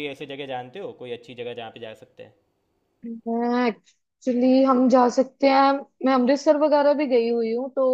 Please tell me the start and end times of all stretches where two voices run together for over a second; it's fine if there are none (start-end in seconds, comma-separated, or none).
none